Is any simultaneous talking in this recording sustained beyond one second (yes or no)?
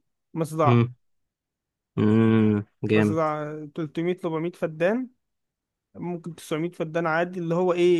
no